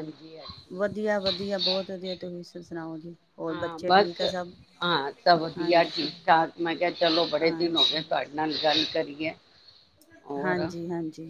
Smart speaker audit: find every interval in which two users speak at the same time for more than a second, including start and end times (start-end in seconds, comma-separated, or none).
none